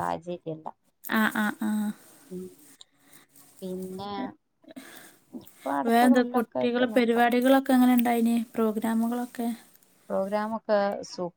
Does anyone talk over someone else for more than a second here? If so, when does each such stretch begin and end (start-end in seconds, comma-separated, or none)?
5.9-7.3